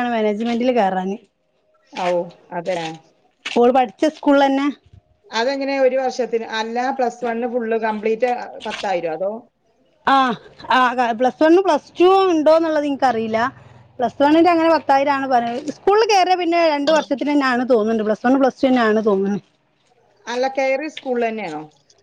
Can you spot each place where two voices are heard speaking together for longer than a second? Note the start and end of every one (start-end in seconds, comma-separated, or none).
none